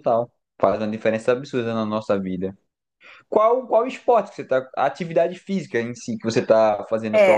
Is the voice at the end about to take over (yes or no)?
yes